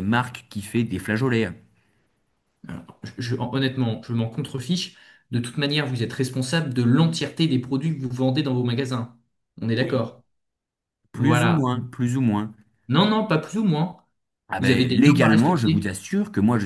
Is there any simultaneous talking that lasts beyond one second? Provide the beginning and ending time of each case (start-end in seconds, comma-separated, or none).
14.6-15.9